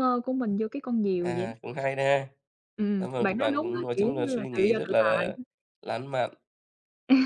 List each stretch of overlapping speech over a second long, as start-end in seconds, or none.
3.0-5.4